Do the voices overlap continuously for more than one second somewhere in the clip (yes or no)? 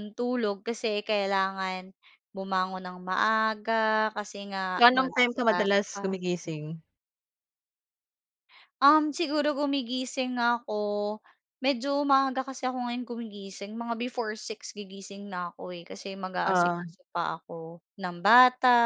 yes